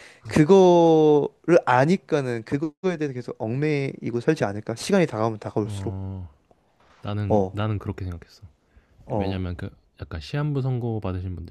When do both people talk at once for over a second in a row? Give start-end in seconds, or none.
none